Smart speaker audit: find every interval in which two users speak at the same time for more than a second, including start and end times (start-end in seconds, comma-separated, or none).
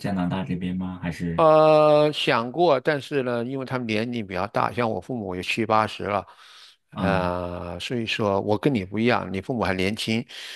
none